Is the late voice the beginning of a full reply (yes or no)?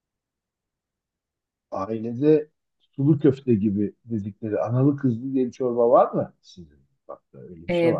yes